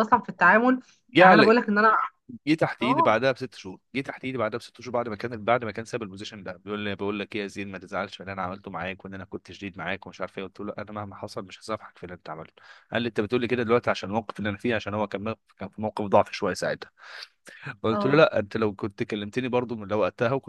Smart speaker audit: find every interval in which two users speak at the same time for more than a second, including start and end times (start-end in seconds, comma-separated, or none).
none